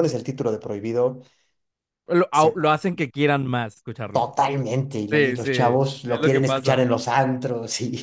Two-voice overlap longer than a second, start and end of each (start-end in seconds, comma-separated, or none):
5.1-6.9